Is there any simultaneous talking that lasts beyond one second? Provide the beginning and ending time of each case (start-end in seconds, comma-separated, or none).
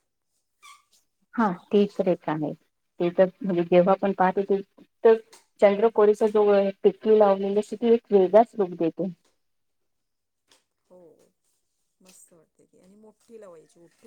none